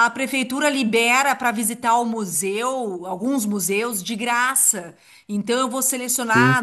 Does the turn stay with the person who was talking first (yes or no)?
yes